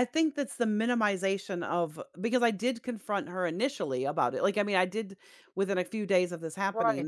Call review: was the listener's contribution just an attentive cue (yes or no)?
no